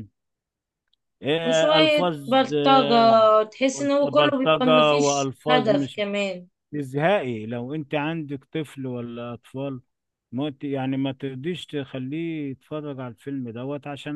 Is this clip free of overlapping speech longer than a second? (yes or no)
no